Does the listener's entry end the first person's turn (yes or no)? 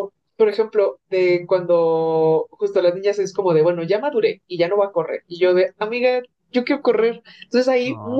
no